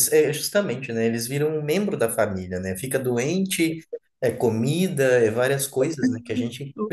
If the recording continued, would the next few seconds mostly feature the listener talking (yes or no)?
no